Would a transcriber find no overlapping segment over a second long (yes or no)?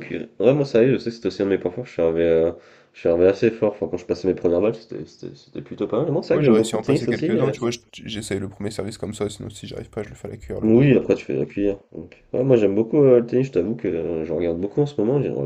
no